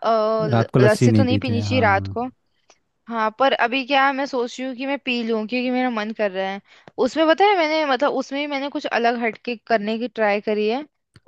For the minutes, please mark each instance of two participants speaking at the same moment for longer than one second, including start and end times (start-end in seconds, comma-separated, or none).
0.5-2.1